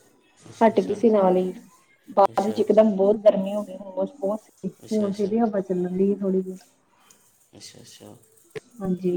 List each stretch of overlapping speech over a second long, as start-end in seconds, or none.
none